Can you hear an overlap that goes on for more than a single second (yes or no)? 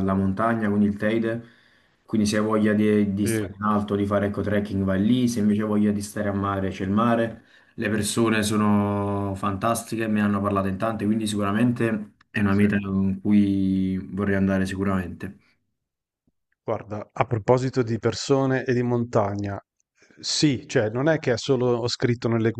no